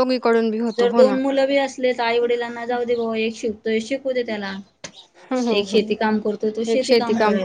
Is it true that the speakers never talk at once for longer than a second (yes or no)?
yes